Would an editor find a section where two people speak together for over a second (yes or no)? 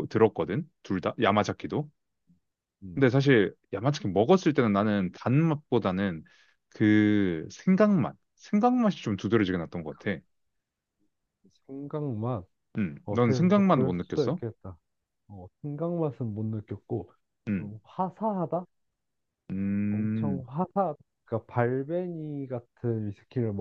yes